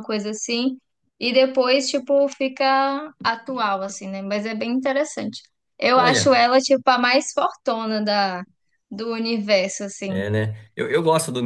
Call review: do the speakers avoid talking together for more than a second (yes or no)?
yes